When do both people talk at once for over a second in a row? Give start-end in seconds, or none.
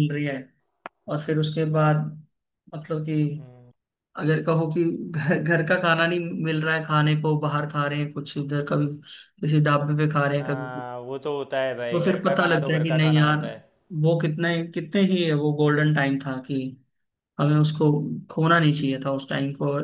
11.9-13.4